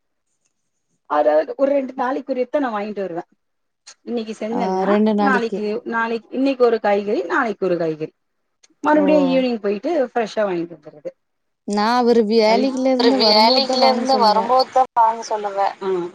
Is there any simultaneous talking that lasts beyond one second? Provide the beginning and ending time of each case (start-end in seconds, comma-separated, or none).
12.5-14.5